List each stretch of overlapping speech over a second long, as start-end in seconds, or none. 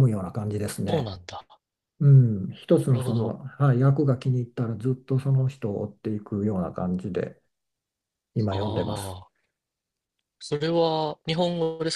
none